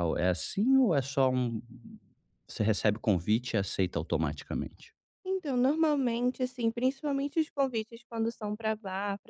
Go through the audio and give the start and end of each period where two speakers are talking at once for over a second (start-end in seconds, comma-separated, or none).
none